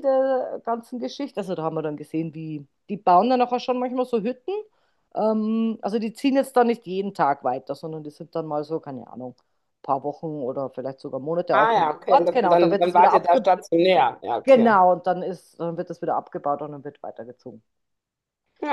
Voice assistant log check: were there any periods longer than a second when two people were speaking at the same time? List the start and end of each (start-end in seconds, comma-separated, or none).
11.5-13.5